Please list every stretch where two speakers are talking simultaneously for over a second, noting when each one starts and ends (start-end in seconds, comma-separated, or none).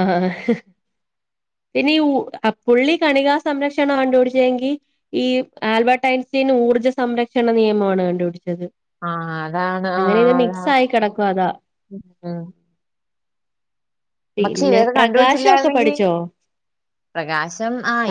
14.4-15.9